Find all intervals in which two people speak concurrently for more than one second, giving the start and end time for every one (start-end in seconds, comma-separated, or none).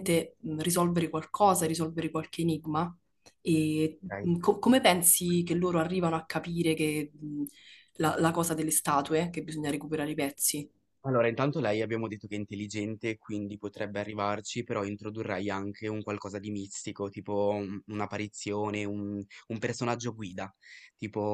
none